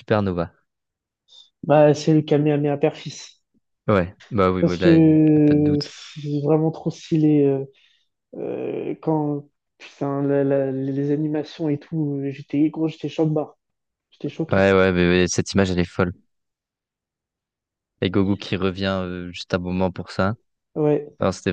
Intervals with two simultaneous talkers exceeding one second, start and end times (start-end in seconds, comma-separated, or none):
4.6-5.9